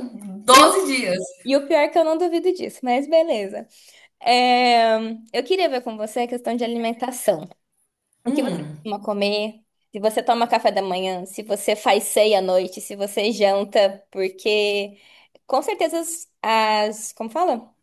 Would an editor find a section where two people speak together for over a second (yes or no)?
no